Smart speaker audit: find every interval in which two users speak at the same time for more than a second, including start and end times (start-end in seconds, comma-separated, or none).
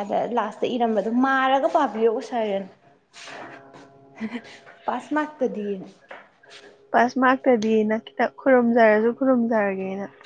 none